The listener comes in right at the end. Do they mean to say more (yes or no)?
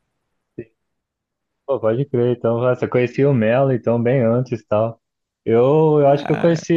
no